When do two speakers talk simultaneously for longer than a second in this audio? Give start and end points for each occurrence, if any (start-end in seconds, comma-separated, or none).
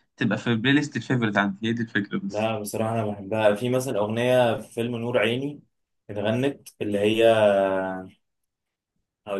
none